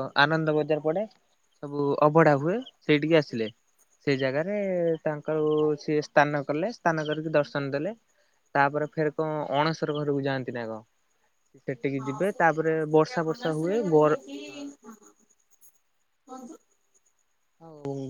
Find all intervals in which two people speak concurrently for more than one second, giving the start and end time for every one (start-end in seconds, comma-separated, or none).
12.0-14.2